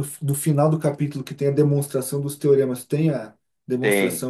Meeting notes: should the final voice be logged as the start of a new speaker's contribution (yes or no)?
yes